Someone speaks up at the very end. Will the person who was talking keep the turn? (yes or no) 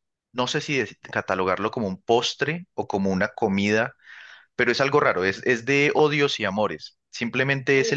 yes